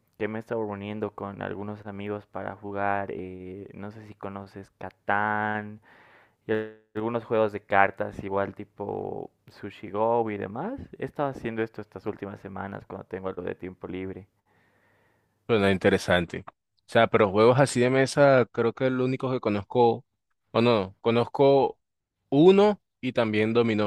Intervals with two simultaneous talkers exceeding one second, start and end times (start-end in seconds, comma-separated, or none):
none